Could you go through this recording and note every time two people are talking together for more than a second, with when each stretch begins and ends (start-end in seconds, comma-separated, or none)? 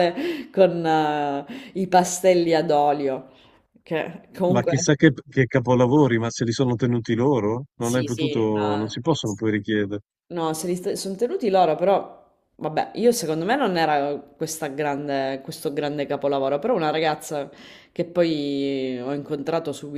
7.8-9.0